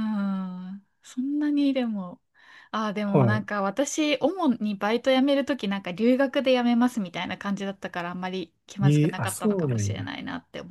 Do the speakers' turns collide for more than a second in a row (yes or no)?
yes